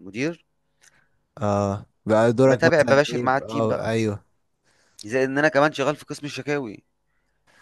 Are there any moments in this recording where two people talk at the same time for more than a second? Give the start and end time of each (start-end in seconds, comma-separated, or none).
2.4-3.9